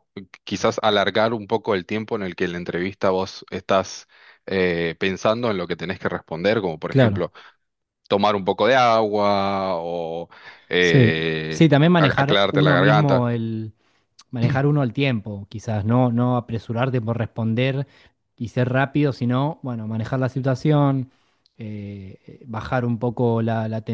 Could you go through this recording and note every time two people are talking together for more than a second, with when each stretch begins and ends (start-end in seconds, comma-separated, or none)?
10.8-13.3